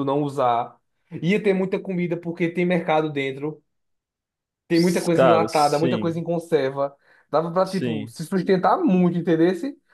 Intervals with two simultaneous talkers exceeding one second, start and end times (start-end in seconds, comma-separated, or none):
4.7-6.2